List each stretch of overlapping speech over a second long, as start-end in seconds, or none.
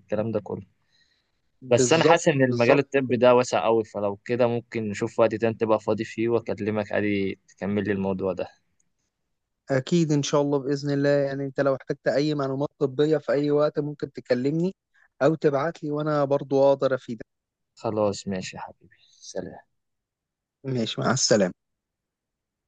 1.7-3.1